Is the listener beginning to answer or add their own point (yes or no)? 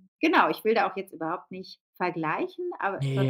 no